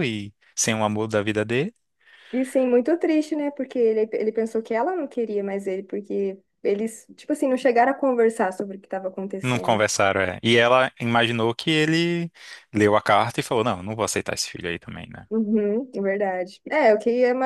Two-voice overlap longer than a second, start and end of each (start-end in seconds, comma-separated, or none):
none